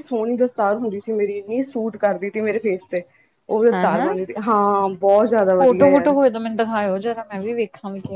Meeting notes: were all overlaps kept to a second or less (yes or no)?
yes